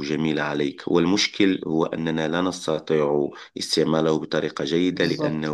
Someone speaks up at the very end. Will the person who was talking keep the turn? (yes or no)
yes